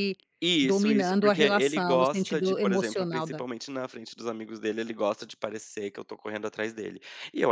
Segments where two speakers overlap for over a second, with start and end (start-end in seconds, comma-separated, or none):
0.6-3.4